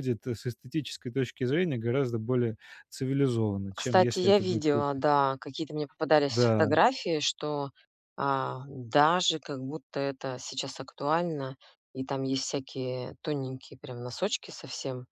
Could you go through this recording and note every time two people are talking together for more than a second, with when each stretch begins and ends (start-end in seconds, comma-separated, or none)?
3.7-5.0